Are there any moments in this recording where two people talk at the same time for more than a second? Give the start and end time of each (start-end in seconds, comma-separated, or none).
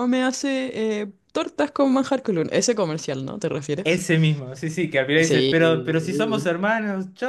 5.2-6.5